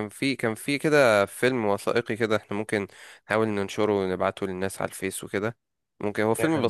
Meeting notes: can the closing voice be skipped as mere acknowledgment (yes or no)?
yes